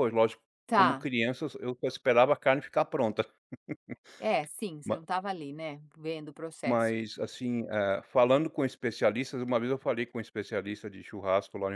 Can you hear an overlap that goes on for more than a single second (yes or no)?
no